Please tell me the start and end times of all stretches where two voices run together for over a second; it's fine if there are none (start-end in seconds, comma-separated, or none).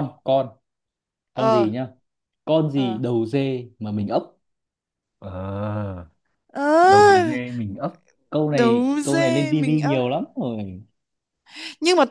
8.5-10.0